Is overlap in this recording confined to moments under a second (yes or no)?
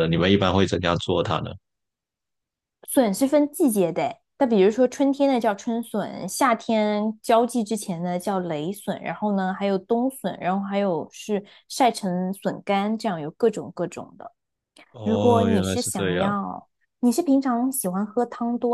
no